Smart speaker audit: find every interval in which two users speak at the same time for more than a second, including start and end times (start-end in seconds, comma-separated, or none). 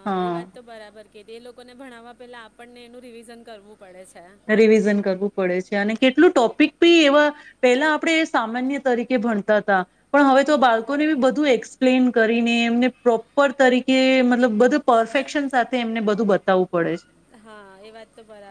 none